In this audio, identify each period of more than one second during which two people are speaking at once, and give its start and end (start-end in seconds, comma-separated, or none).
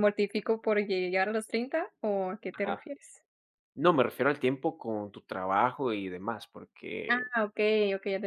none